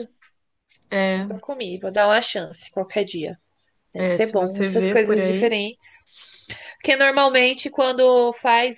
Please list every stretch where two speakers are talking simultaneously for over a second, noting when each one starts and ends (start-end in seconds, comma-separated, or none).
4.0-5.5